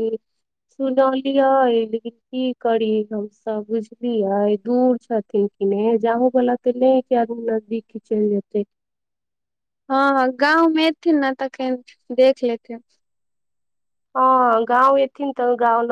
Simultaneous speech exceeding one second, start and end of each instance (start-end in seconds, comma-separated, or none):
none